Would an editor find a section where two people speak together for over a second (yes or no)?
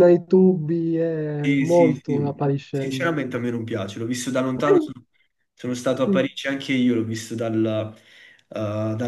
yes